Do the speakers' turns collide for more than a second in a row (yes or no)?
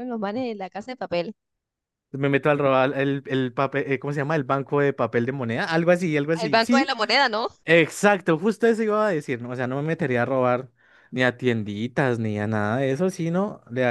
no